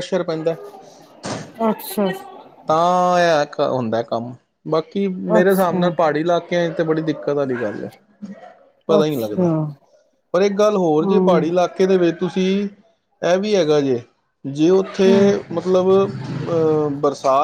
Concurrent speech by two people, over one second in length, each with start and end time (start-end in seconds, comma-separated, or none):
none